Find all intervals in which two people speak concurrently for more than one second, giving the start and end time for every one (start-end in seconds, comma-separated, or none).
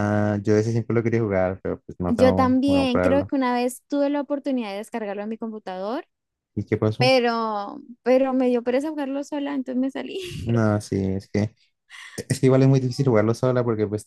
2.1-3.3